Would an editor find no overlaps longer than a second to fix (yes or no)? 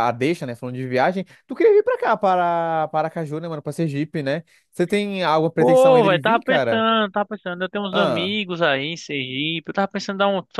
no